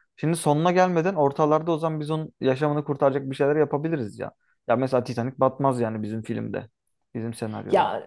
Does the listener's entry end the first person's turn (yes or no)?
yes